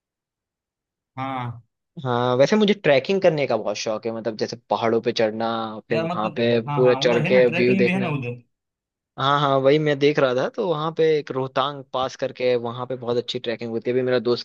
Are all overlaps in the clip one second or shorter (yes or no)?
no